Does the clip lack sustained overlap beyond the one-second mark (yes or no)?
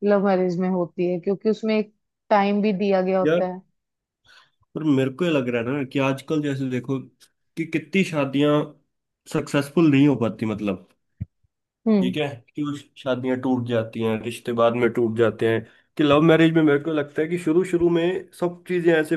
yes